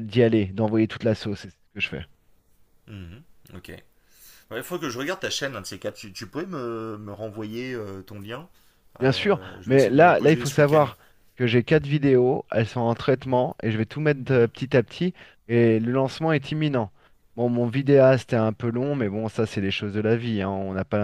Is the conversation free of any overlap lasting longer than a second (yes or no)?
no